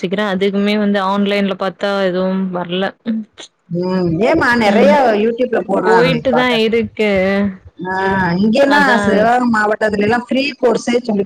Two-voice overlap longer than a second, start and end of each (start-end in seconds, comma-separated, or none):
none